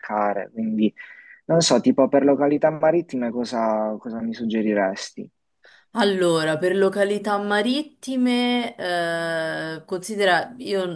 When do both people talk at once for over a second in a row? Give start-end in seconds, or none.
none